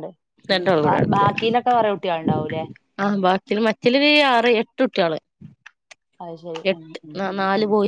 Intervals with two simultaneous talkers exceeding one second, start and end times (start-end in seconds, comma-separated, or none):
none